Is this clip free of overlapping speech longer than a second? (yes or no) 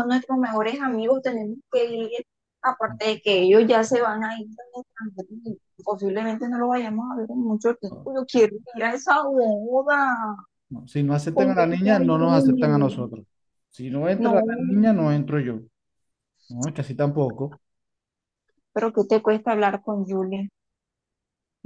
no